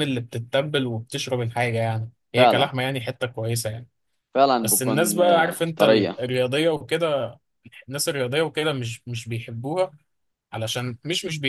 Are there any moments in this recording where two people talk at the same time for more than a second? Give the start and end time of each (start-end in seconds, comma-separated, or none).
4.6-6.2